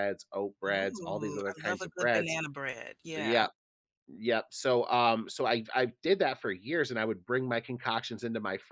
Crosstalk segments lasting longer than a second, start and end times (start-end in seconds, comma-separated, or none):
0.7-2.4